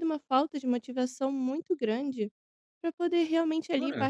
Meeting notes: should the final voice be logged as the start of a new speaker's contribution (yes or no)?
no